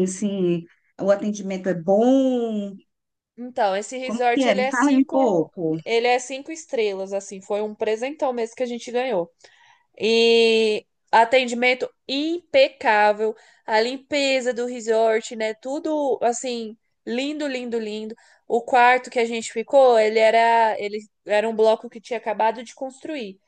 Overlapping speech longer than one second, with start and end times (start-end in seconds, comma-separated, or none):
4.1-5.6